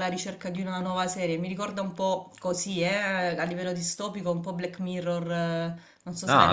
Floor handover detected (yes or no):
yes